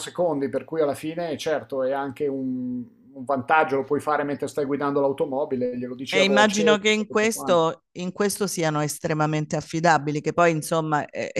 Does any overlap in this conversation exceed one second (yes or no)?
yes